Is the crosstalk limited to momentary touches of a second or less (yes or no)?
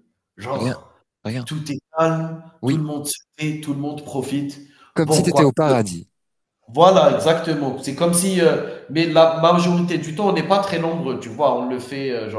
yes